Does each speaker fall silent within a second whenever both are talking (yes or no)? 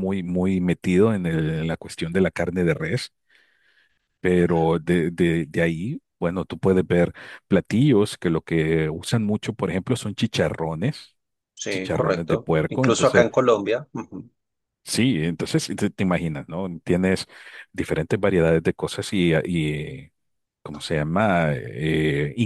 no